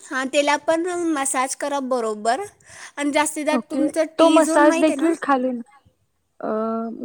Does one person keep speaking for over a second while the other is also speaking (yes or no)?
yes